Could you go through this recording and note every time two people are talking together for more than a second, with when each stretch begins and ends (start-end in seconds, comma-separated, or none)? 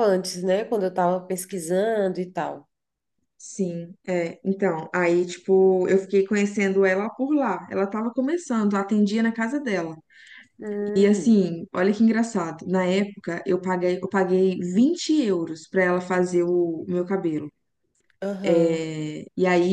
none